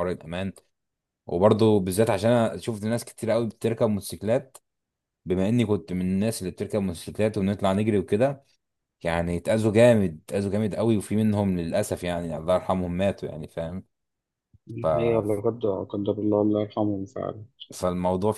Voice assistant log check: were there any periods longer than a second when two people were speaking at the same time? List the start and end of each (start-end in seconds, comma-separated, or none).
none